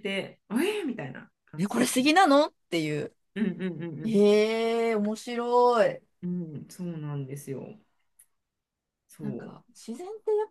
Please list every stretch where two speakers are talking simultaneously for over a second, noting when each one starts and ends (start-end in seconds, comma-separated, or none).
none